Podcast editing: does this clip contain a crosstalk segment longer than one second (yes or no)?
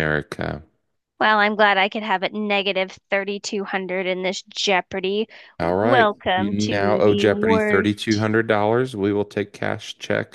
yes